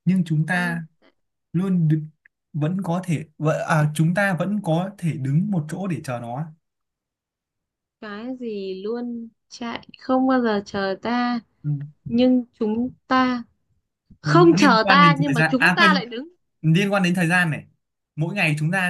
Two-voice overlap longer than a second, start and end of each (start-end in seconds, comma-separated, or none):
14.2-16.1